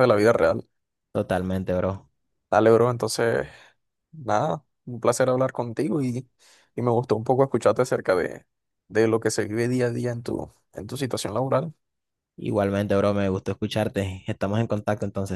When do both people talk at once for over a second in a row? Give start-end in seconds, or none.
none